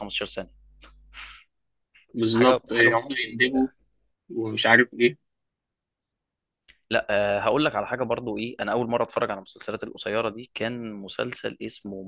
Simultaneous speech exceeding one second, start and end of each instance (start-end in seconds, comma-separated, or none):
2.3-3.6